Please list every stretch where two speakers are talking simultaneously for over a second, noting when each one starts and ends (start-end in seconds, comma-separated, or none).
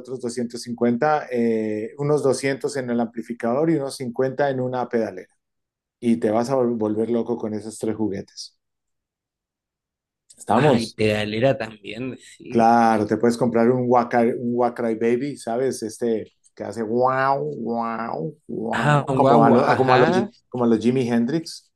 18.7-20.3